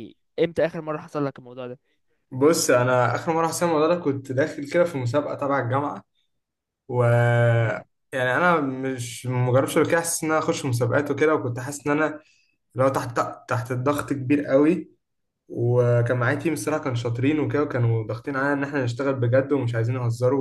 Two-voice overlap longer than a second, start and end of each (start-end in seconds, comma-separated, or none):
none